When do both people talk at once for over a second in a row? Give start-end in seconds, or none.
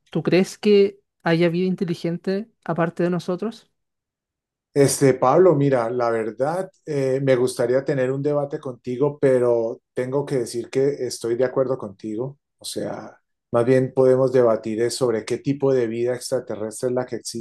none